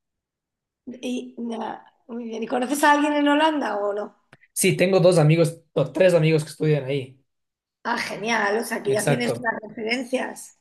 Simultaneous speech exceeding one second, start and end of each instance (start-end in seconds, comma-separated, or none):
none